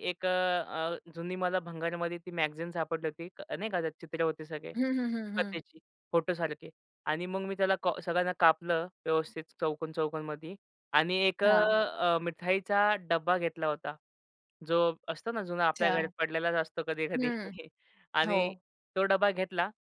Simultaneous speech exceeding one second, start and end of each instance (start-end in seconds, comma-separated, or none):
none